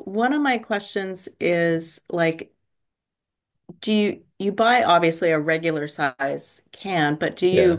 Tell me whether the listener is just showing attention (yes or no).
yes